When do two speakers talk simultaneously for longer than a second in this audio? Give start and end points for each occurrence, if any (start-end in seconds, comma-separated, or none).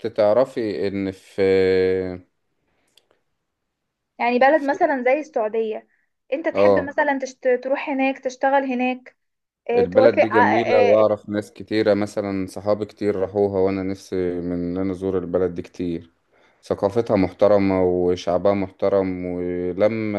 9.8-11.1